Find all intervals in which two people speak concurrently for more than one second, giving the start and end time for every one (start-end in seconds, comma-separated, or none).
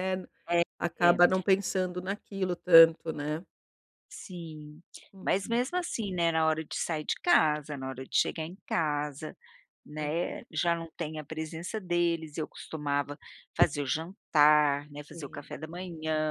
none